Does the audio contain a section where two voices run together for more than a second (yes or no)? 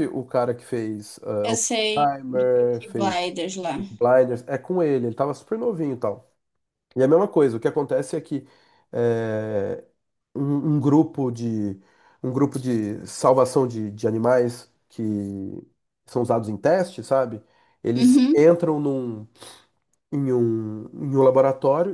yes